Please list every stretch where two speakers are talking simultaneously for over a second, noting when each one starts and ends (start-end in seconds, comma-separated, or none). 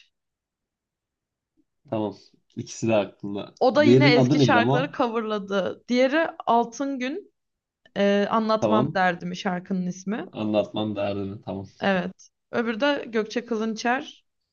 3.6-5.0